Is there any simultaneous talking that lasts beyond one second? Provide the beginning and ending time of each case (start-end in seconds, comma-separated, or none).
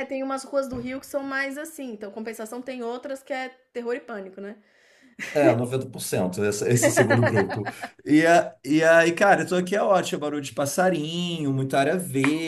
none